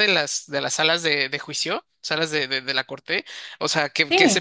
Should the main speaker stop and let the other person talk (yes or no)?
no